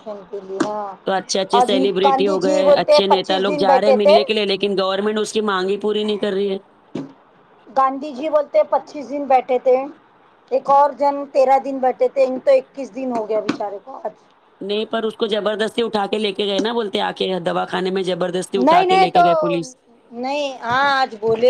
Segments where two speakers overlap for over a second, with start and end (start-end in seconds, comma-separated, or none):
1.6-4.2